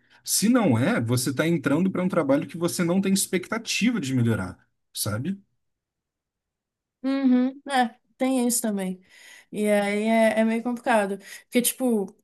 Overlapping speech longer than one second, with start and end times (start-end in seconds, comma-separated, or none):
none